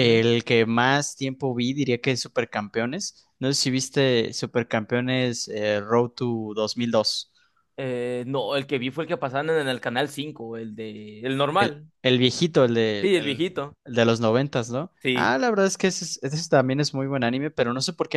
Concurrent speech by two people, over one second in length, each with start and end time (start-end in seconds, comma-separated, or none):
none